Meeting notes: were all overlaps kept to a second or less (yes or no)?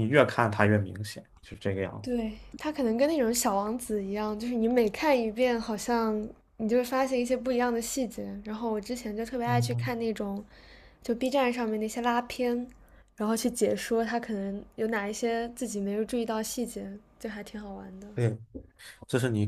yes